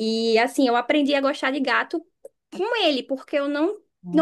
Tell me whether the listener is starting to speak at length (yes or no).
no